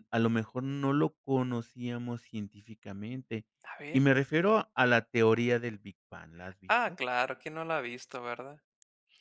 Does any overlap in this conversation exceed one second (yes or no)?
no